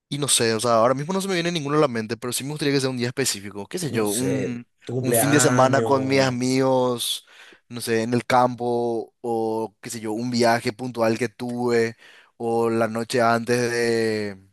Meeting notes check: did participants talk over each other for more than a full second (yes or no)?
yes